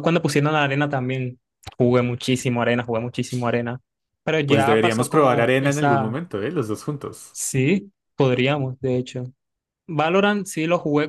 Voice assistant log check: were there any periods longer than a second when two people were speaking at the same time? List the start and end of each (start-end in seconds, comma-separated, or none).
4.4-6.1